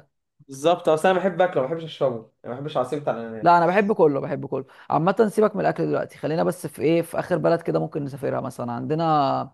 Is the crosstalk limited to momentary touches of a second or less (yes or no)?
yes